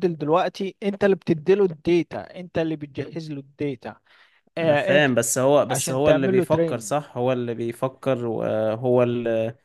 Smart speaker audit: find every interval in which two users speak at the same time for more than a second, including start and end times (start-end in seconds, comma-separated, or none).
5.7-7.0